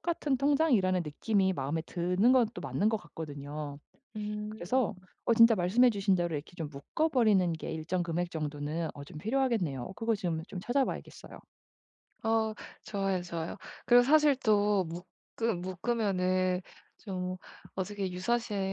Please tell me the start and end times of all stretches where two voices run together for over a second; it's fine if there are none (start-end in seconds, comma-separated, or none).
none